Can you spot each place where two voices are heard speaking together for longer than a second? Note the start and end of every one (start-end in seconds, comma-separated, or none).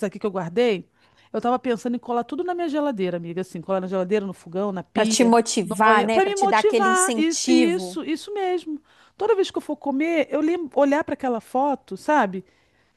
4.9-8.0